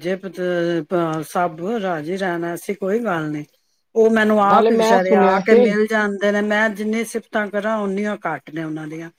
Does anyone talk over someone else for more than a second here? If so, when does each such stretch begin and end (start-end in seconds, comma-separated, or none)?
4.2-5.7